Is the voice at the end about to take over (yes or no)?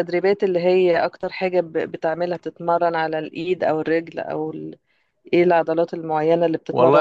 yes